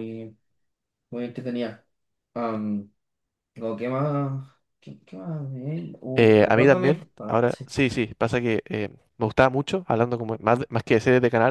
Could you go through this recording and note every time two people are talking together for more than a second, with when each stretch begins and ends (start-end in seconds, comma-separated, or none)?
6.1-7.7